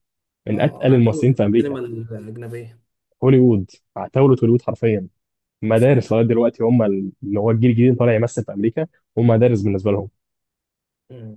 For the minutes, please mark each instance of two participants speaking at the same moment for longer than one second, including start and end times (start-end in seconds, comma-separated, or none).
0.5-1.8